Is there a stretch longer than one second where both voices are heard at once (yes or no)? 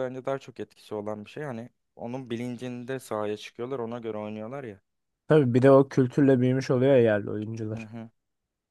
no